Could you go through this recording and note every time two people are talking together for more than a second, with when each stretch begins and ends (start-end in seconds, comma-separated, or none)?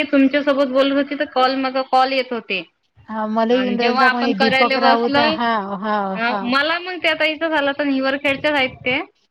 3.5-5.2